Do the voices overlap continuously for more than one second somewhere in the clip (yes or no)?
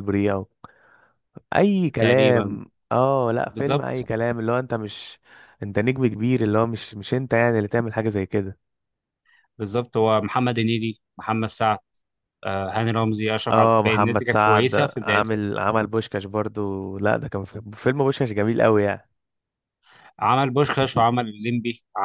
yes